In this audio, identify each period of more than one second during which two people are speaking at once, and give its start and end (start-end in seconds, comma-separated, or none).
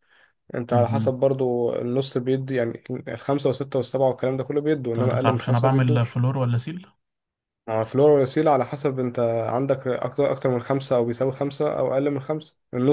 4.9-6.2